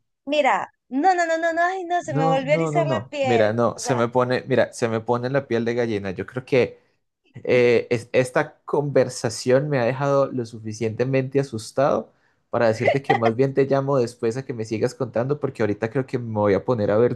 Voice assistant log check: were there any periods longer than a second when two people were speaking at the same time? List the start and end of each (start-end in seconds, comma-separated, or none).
2.0-4.0